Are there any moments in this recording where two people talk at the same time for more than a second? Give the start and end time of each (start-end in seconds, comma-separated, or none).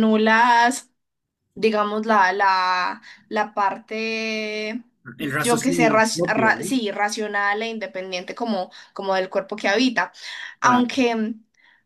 5.2-6.7